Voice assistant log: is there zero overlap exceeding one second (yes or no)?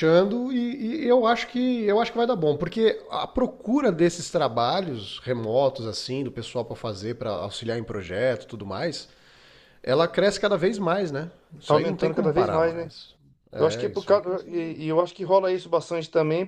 no